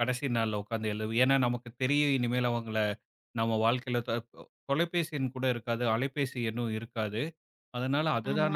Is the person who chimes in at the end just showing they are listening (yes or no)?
yes